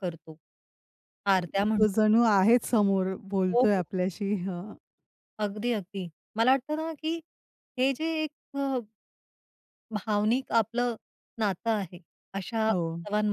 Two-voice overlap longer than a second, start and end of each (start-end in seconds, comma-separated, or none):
none